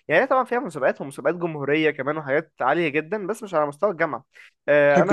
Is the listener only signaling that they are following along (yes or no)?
yes